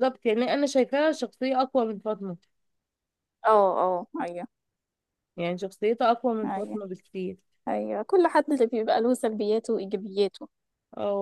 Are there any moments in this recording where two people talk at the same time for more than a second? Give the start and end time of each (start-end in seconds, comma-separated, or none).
none